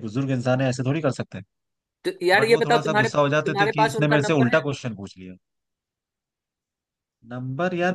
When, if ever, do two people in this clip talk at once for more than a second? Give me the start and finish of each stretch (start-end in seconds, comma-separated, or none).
2.4-4.6